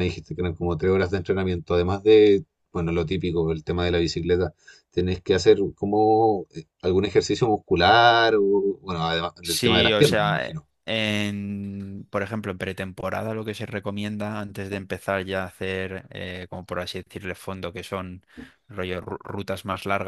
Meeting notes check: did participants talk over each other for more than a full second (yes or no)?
yes